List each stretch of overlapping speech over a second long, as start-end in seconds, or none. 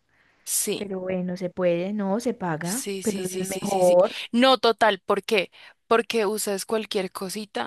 2.6-4.2